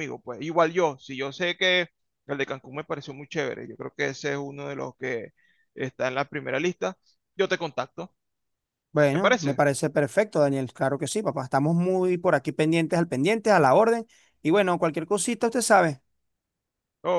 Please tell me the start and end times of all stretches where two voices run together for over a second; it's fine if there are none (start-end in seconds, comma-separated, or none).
none